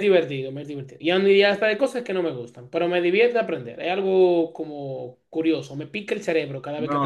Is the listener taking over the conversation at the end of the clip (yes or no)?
yes